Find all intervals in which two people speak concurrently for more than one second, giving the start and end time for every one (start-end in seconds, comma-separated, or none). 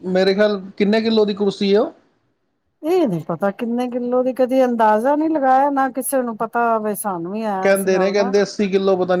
none